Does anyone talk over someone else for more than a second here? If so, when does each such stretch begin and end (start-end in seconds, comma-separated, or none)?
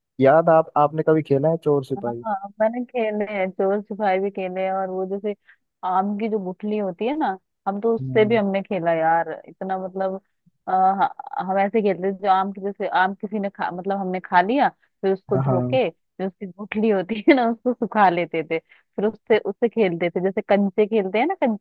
none